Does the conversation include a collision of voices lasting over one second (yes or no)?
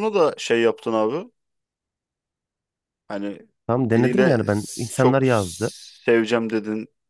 yes